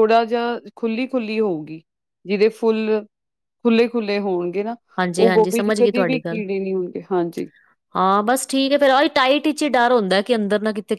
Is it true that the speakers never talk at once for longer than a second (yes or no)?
no